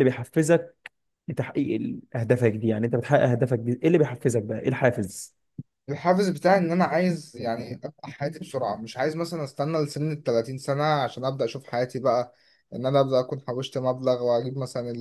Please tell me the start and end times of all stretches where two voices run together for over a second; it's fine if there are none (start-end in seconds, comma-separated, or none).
none